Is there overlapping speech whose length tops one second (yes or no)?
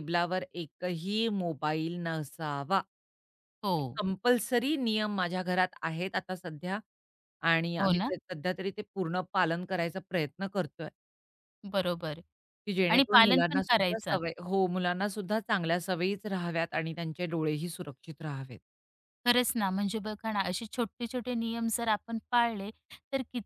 yes